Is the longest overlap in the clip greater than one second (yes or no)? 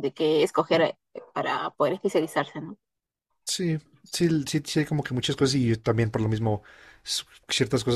no